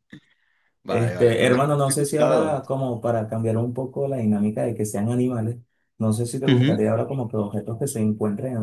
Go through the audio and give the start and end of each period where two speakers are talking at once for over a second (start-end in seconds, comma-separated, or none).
0.9-2.6